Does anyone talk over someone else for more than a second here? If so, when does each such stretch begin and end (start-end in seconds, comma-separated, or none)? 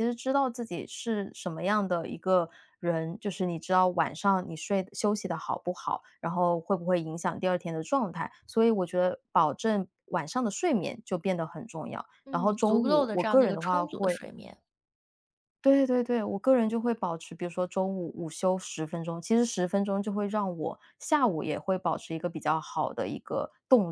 12.2-14.2